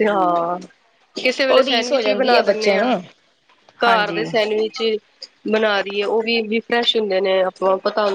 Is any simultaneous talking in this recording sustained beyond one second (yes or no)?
yes